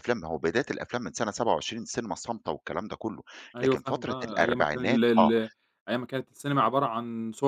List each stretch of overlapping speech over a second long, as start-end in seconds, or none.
3.6-5.3